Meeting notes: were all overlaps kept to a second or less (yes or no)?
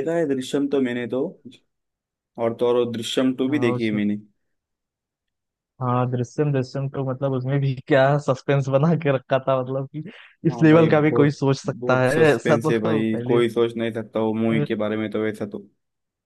no